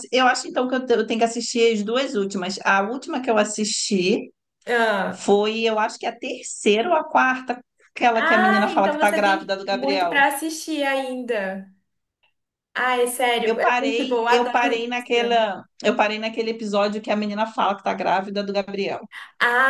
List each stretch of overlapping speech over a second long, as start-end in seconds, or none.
8.1-10.3, 13.4-15.5